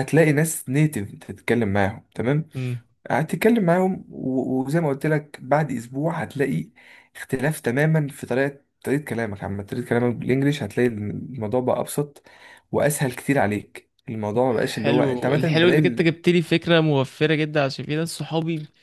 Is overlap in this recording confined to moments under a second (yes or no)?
no